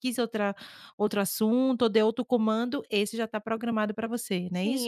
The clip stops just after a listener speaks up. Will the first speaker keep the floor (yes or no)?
no